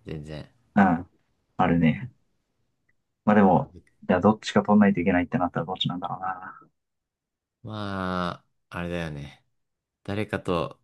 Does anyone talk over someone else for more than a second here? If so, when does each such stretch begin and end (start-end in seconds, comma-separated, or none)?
none